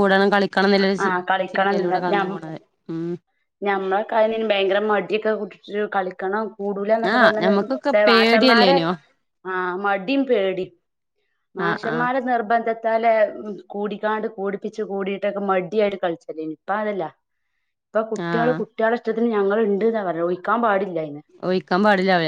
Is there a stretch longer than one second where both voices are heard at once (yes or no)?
yes